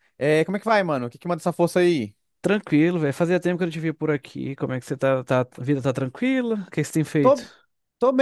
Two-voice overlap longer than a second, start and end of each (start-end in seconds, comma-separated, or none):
none